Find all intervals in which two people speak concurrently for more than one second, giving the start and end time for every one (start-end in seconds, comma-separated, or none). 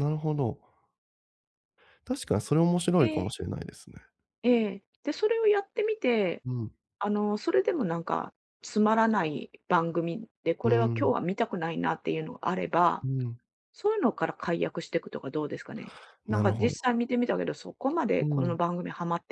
none